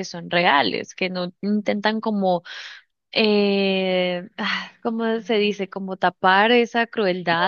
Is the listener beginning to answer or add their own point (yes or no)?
no